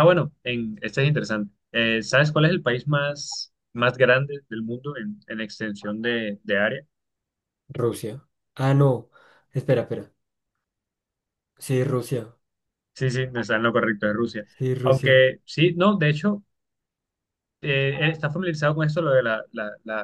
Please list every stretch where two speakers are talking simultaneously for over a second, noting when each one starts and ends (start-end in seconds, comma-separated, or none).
none